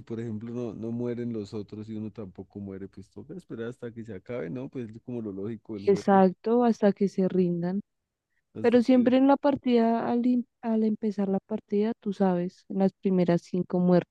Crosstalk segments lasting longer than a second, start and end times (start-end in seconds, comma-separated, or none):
none